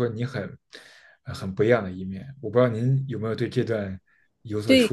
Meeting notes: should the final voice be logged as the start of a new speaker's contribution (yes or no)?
yes